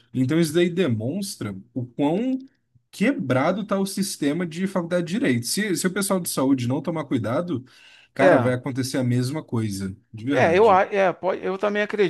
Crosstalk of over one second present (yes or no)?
no